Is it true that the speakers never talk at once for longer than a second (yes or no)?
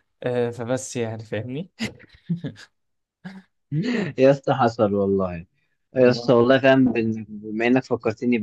yes